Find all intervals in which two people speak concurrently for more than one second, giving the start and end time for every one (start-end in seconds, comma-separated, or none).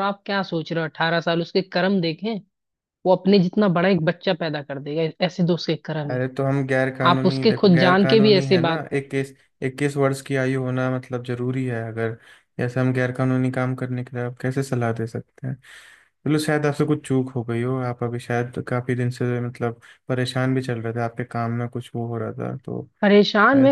7.1-8.8